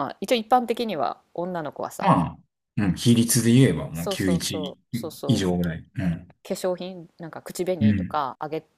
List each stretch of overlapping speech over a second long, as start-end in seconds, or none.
3.9-5.5